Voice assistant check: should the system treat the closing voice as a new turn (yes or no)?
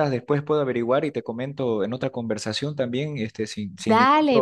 yes